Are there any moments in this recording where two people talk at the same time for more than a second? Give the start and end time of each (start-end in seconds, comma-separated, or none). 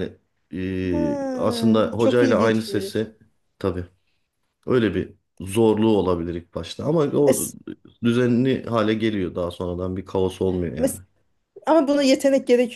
0.9-3.1